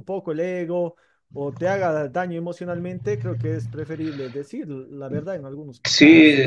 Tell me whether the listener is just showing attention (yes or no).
no